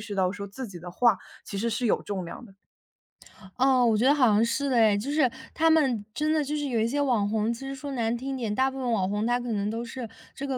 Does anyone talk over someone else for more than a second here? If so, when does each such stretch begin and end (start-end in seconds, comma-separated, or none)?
none